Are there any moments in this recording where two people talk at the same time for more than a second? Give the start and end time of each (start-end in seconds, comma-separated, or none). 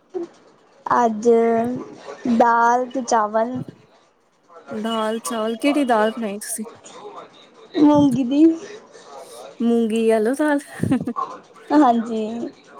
4.8-6.6